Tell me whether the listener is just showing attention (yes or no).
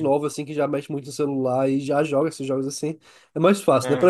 yes